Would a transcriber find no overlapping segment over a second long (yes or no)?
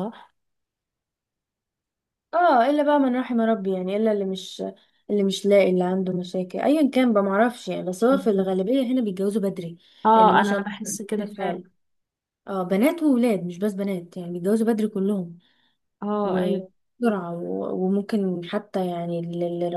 no